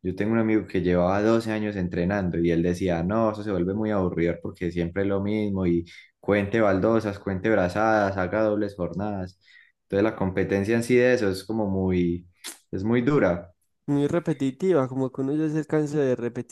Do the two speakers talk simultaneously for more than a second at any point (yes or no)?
no